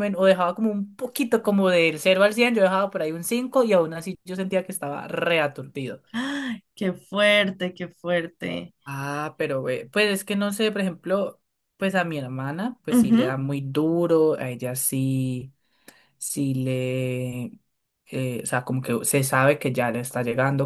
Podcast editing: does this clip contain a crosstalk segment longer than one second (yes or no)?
no